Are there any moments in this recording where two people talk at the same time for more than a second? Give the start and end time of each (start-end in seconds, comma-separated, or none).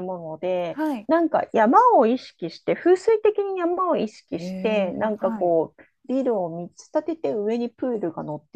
4.3-5.5